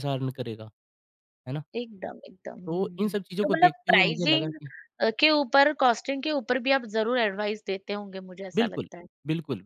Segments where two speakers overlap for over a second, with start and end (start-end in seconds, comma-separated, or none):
2.6-4.5